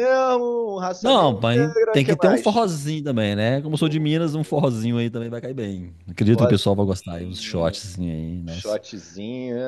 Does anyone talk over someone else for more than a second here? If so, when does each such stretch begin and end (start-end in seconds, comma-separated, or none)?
1.0-2.7, 6.3-7.8